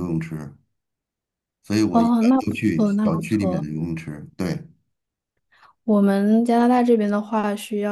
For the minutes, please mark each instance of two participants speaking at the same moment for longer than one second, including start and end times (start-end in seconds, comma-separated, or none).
1.9-3.7